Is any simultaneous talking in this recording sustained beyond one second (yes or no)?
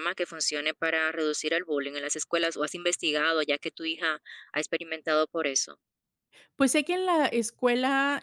no